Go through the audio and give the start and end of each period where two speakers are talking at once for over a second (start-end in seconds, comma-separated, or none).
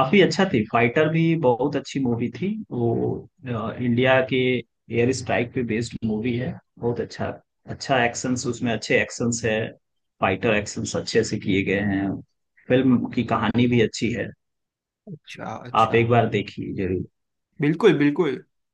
none